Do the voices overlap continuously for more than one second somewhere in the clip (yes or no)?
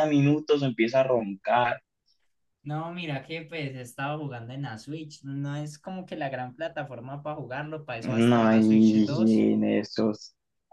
yes